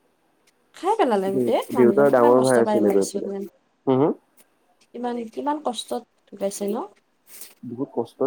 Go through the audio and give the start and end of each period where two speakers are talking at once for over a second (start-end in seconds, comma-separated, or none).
1.3-3.3